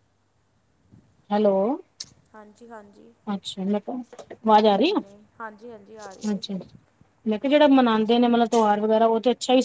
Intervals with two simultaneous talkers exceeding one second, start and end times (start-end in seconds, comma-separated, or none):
4.7-6.4